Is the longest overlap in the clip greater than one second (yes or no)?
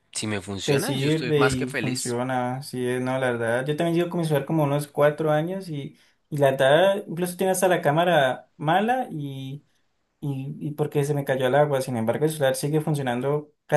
yes